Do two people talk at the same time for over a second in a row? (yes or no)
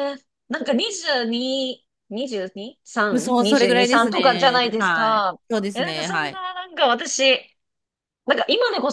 yes